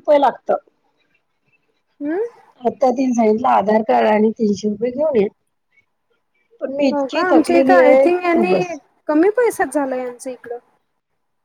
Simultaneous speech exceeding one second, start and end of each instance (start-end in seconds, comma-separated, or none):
6.9-8.7